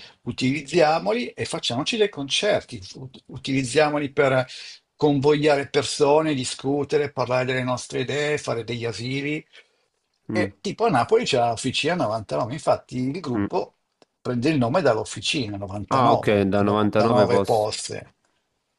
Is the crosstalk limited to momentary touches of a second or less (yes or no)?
no